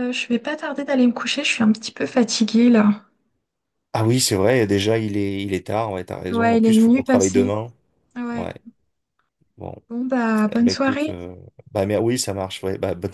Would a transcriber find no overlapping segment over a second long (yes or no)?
no